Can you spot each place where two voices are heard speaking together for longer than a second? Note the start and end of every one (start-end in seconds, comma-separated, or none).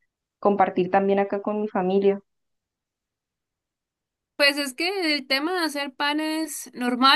none